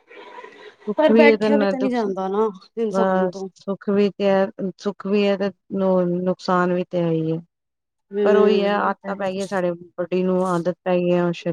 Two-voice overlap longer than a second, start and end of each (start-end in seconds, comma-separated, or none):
1.0-3.5